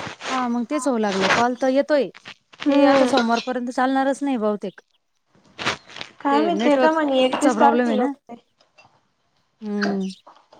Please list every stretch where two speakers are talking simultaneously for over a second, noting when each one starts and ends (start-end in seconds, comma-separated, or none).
6.3-8.1